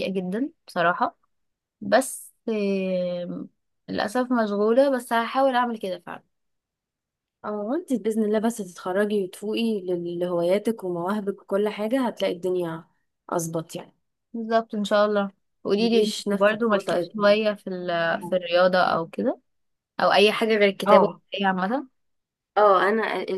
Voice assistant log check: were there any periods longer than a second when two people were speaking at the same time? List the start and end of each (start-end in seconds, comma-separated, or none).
15.8-17.1